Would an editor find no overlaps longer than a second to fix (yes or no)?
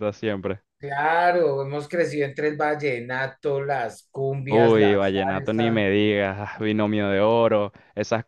no